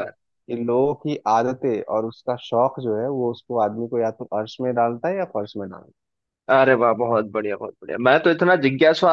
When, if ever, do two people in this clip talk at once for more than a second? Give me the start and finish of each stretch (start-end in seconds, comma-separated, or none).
none